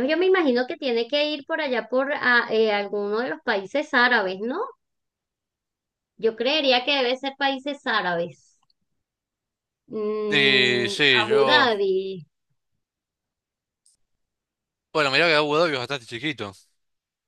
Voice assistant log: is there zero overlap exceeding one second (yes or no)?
no